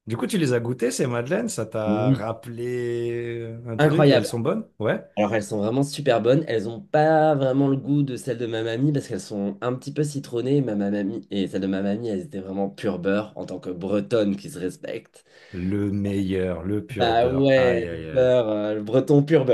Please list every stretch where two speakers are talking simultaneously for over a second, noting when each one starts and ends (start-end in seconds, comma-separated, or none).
16.9-18.3